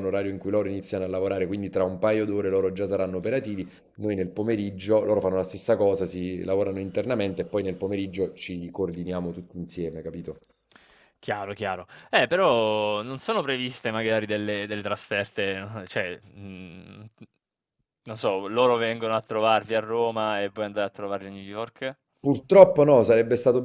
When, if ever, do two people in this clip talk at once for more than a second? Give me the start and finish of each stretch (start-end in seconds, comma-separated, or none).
none